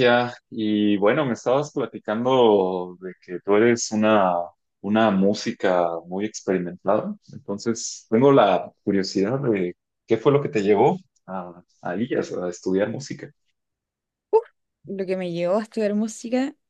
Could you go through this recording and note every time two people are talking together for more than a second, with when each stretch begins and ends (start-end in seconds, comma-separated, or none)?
none